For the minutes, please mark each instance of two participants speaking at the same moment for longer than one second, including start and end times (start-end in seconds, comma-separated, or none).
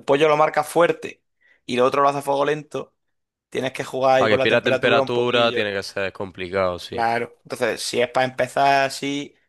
4.2-5.8